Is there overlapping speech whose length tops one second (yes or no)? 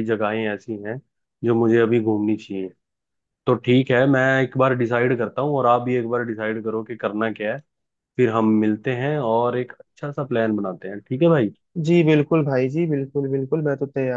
no